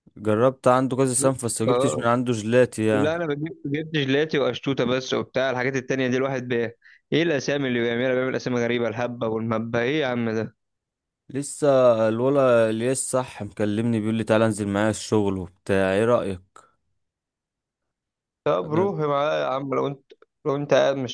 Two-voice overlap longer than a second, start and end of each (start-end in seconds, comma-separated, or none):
none